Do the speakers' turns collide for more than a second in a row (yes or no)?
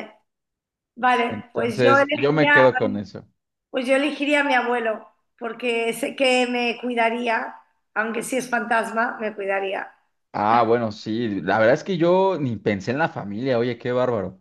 yes